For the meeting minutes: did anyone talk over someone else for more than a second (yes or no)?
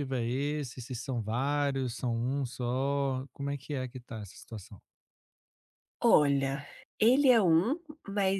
no